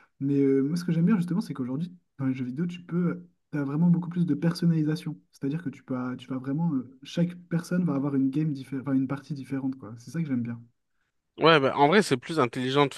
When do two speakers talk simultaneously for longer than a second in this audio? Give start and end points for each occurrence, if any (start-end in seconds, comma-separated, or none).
none